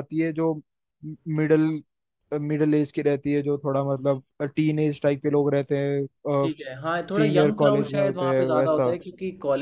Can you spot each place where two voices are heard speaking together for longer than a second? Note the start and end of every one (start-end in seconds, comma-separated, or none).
7.2-8.9